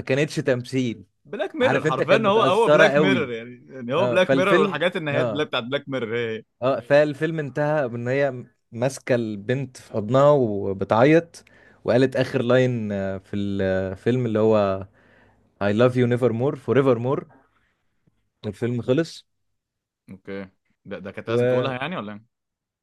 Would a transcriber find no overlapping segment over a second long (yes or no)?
no